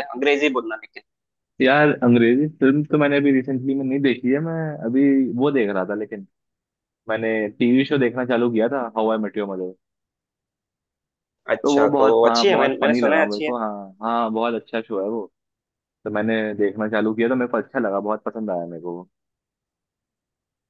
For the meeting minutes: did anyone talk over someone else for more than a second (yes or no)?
yes